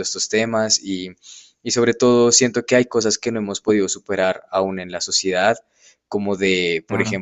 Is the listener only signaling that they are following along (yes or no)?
yes